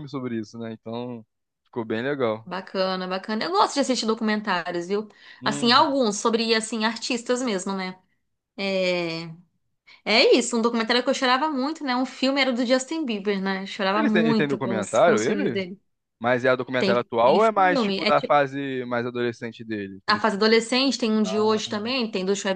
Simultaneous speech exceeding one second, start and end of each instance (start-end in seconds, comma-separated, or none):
13.9-15.6, 16.8-18.1